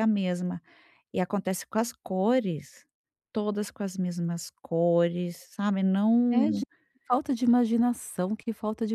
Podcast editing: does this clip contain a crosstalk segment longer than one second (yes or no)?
no